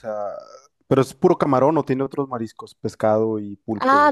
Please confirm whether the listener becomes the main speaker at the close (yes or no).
yes